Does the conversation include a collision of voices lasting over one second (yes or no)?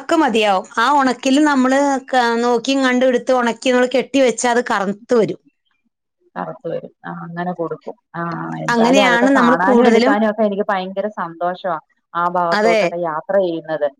yes